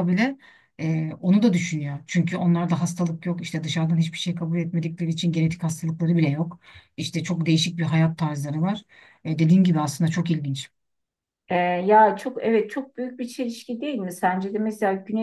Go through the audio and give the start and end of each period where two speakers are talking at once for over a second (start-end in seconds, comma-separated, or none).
none